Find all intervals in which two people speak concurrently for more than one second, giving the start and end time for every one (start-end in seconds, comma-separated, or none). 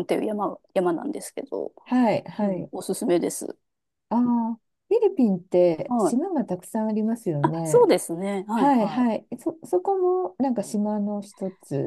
none